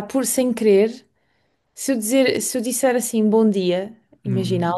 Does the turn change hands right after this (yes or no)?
no